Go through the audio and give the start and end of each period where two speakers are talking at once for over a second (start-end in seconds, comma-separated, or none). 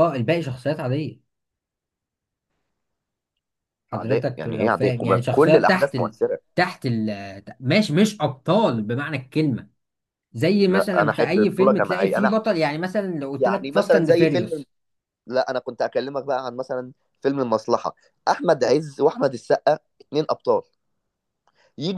3.9-6.2, 10.7-12.4, 13.4-14.7